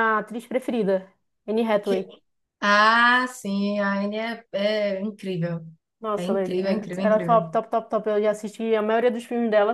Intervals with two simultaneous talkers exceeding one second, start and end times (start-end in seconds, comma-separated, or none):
6.2-7.5